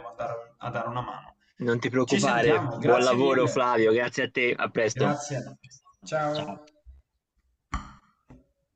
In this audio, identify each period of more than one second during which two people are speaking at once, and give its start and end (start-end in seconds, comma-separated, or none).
2.0-3.7